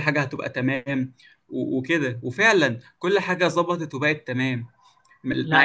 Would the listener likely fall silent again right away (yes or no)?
yes